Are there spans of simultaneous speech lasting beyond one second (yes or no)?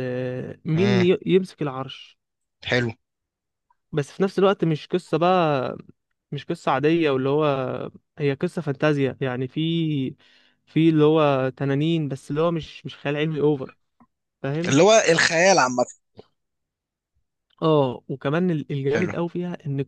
no